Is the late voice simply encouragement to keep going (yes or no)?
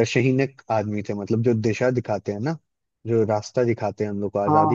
yes